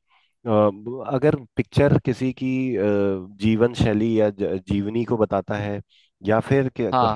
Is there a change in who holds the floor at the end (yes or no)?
no